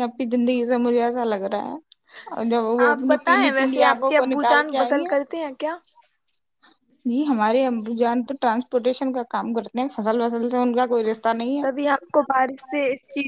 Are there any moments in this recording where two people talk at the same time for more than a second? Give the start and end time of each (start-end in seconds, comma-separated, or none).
2.9-5.0